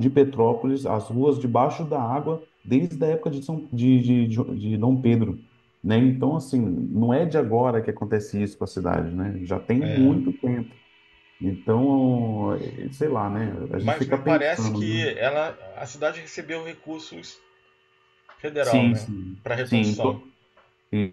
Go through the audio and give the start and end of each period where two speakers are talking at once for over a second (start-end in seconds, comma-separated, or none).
13.8-15.1, 18.6-20.2